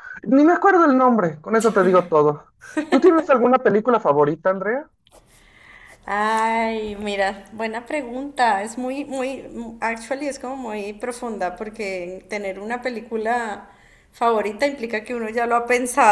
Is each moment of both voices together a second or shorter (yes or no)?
yes